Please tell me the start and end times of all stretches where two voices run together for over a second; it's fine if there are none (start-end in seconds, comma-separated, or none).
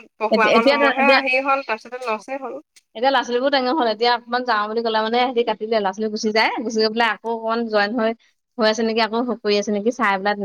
none